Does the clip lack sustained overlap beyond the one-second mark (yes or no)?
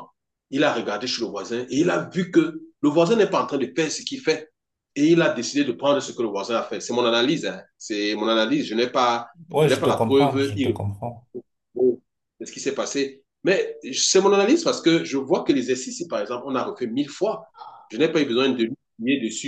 no